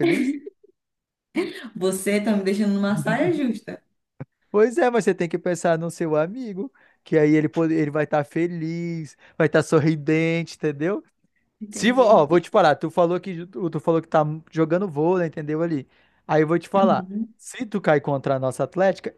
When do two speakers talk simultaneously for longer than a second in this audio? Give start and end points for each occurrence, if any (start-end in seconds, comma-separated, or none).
none